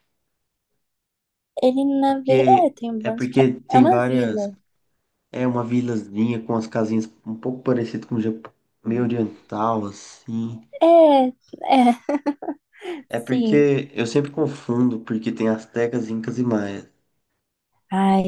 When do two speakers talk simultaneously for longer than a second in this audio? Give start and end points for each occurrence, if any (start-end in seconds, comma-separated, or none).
2.0-4.5